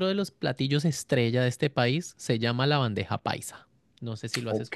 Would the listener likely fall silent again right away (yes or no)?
no